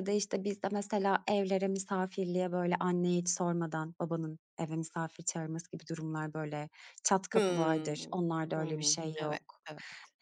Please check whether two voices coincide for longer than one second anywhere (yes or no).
yes